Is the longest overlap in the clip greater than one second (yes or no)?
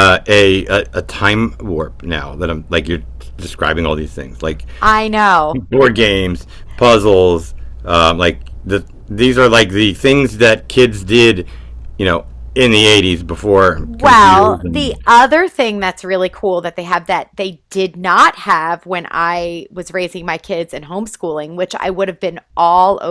yes